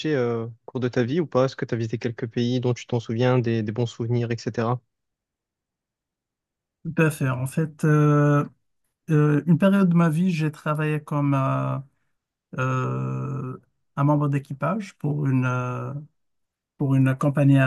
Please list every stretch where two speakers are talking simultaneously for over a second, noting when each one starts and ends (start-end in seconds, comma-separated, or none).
none